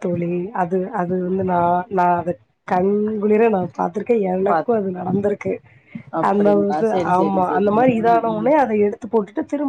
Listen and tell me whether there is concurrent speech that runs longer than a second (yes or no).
yes